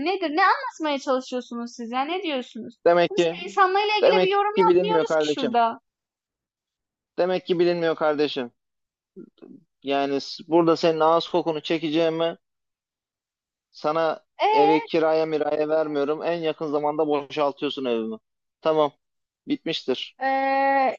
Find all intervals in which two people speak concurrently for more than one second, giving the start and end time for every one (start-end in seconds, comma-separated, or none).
4.0-5.5